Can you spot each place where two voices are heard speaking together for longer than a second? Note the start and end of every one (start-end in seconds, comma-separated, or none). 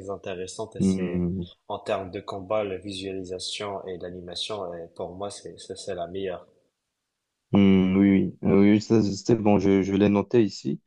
none